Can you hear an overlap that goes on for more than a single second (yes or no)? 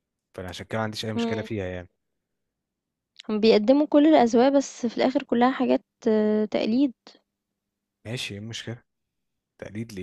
no